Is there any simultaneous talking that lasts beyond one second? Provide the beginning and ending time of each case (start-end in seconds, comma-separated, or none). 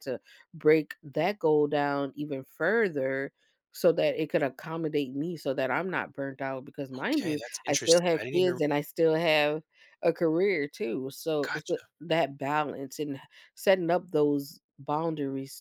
7.0-8.6